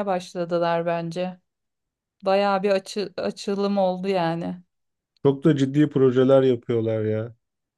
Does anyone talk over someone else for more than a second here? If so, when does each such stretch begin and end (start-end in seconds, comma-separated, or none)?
none